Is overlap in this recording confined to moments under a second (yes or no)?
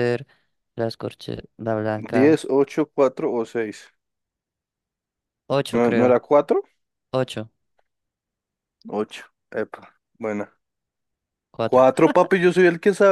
yes